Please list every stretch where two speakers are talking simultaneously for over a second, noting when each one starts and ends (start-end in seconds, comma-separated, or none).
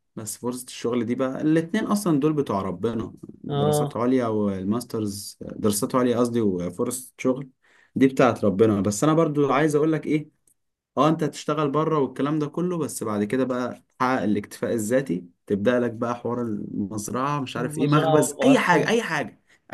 17.6-18.9